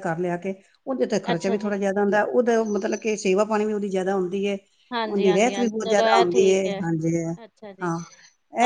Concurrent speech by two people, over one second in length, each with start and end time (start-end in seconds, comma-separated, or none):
5.1-6.4